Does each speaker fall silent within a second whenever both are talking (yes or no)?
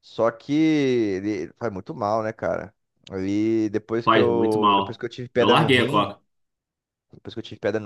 no